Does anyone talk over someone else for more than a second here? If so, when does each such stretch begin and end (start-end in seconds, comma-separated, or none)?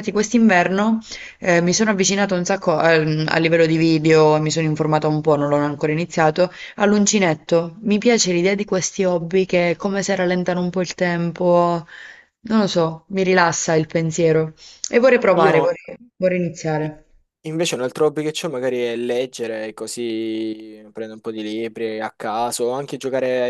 none